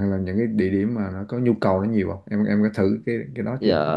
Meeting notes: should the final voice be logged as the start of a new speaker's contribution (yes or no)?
yes